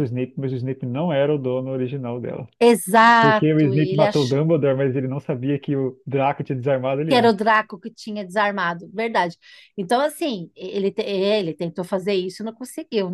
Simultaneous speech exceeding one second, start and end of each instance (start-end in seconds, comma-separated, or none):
3.2-4.4